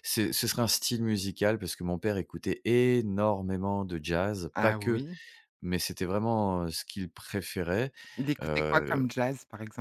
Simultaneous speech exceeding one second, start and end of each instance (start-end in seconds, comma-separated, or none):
none